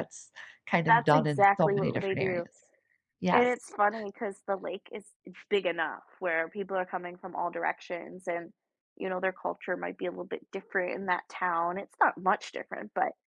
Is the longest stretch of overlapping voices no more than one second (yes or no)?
no